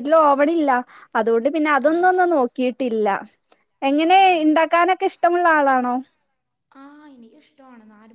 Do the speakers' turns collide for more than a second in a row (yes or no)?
no